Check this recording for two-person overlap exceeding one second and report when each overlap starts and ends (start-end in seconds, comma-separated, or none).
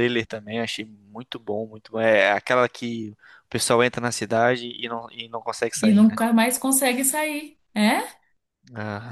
none